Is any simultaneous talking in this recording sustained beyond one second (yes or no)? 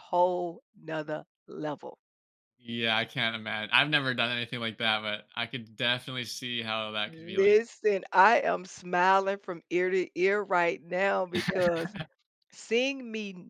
no